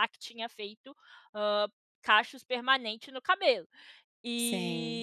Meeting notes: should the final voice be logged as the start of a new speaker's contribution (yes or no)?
no